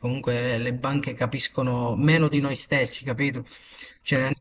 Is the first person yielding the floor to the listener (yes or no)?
no